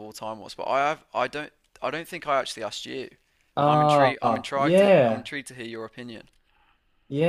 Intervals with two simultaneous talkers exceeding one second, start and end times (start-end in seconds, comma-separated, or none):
3.6-5.3